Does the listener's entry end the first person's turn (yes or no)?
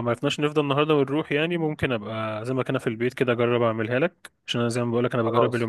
no